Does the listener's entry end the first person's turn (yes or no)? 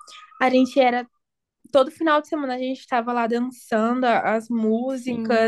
yes